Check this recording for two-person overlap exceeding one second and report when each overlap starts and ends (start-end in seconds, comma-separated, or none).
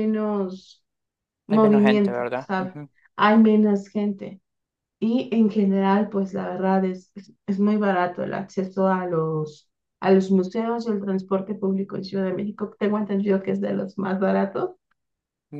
1.5-2.7